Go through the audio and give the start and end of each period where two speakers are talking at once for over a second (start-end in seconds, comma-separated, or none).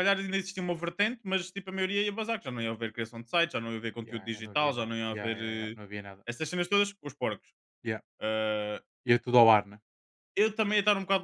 4.0-5.8